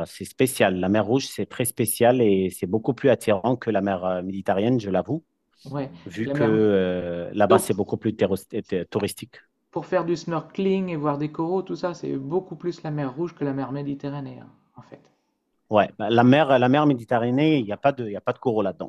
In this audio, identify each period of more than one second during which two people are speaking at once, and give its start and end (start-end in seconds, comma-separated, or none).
none